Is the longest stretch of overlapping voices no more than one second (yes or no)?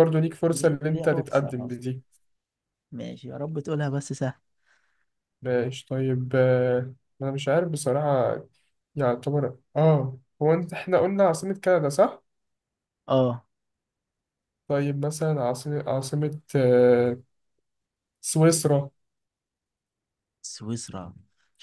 no